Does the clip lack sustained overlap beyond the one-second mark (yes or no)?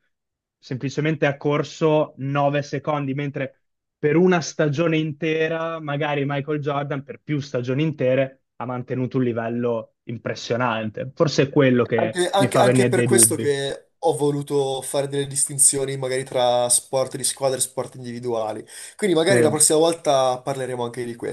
no